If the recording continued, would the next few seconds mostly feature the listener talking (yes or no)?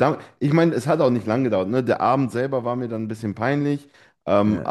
no